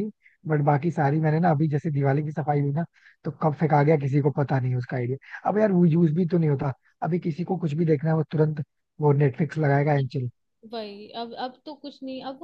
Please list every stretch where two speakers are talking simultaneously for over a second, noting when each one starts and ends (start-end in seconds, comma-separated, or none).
none